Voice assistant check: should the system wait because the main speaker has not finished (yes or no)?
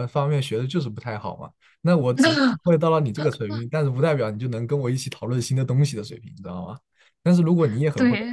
yes